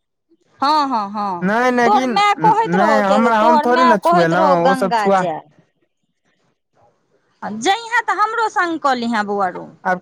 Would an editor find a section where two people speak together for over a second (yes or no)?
yes